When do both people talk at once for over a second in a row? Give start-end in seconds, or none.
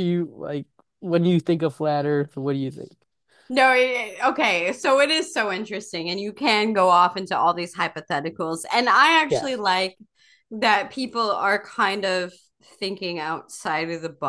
none